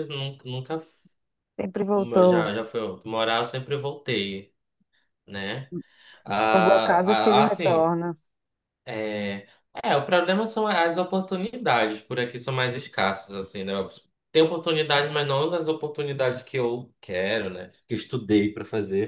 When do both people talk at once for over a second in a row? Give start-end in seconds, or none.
6.5-7.9